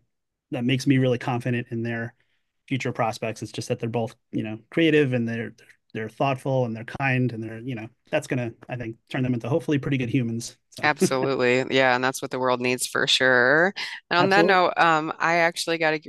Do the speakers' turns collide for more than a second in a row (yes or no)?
no